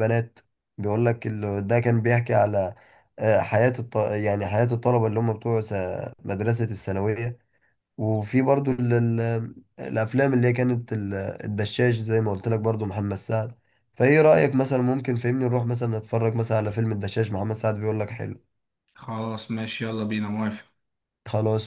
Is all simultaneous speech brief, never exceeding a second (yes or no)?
yes